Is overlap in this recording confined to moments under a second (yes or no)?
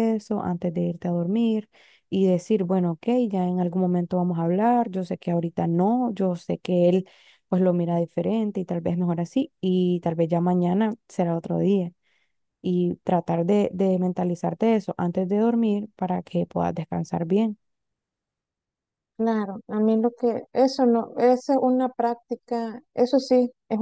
yes